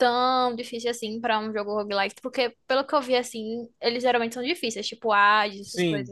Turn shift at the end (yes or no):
yes